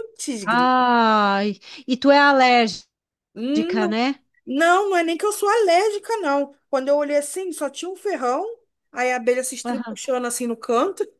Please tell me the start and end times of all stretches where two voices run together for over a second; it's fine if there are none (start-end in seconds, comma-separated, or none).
none